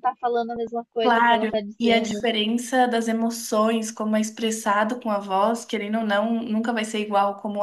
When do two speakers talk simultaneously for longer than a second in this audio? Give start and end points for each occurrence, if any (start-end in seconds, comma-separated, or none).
1.0-2.3